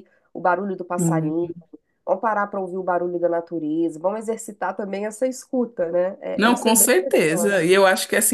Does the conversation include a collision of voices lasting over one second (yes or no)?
yes